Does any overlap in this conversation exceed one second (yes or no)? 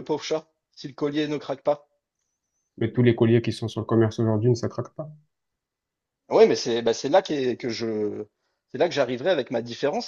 no